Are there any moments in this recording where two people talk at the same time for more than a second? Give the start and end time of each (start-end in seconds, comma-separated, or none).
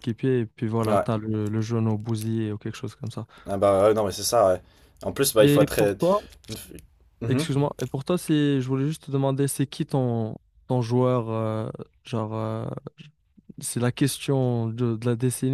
none